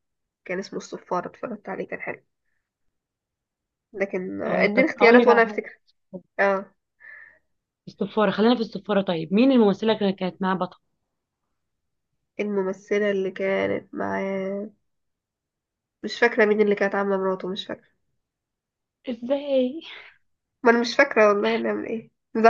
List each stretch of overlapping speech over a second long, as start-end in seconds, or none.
4.5-5.7